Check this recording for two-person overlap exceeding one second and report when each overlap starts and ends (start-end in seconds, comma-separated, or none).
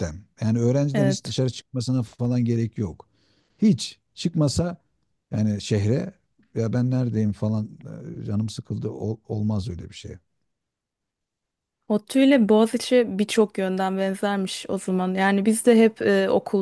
none